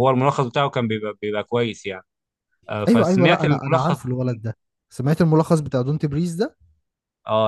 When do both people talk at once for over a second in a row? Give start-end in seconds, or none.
2.9-4.1